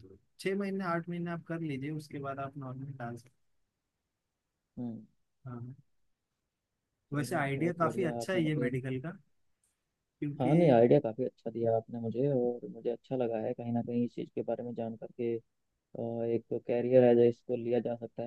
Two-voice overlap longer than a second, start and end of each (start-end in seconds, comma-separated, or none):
7.2-8.7